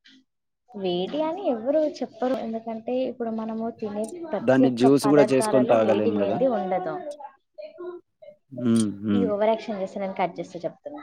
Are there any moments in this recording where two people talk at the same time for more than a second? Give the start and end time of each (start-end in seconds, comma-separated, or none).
4.5-6.4